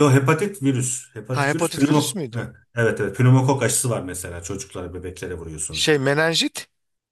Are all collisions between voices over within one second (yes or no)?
no